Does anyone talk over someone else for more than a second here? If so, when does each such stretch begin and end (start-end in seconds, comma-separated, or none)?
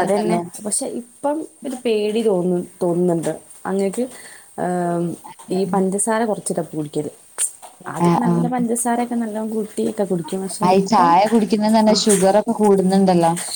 none